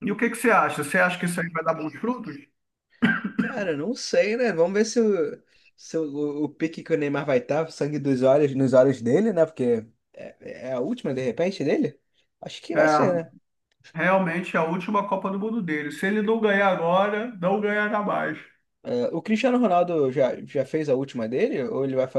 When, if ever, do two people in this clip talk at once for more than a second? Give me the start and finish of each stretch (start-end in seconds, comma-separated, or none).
none